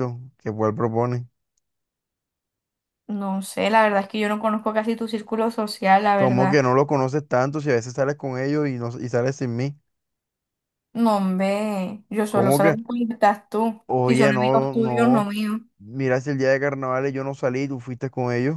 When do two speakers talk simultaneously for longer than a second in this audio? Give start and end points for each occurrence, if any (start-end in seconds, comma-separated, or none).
13.8-15.3